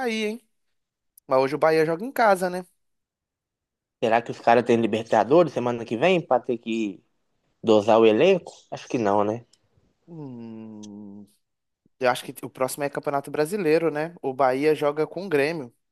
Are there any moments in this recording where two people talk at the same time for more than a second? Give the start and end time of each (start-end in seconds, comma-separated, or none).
none